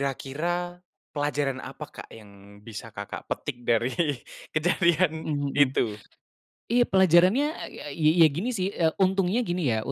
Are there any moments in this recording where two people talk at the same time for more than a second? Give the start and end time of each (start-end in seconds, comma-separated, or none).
none